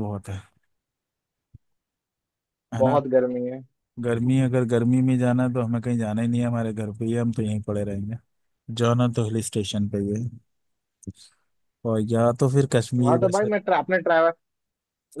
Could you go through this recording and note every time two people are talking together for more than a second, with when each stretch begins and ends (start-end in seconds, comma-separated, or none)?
none